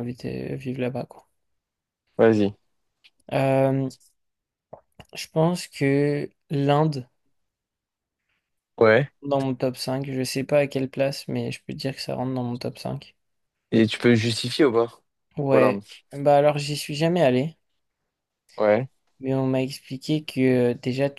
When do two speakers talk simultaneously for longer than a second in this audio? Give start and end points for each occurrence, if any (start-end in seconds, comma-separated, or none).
none